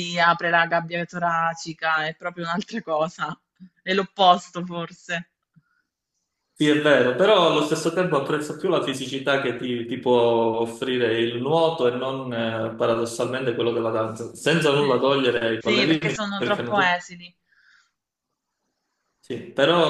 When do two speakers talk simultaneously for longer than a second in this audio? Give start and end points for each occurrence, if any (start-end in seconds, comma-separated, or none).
15.6-17.0